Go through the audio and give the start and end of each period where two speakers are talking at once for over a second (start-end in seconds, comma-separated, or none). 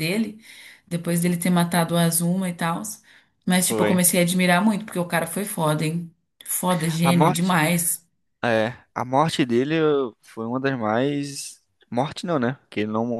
none